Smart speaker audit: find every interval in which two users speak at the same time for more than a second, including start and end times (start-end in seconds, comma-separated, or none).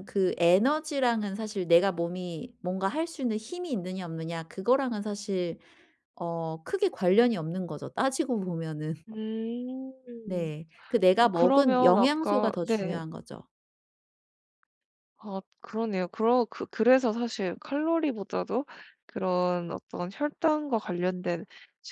11.2-13.0